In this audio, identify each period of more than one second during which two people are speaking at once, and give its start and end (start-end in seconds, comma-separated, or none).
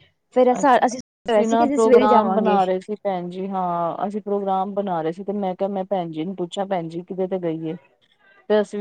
none